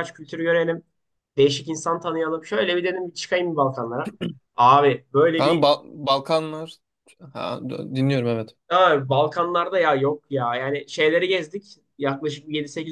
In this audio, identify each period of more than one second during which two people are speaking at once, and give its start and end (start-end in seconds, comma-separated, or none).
none